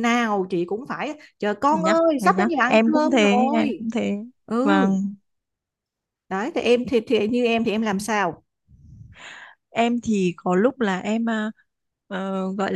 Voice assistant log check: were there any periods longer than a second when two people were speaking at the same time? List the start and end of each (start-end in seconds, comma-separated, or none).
1.7-3.9